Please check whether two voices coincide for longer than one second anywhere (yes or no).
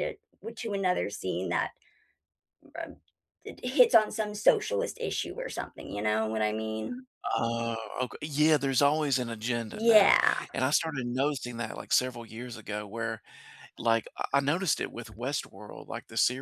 no